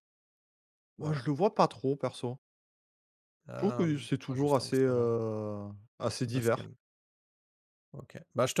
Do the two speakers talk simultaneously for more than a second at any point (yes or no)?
yes